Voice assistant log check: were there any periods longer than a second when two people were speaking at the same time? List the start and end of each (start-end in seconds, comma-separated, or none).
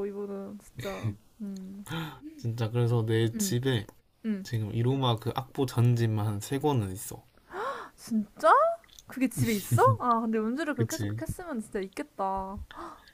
none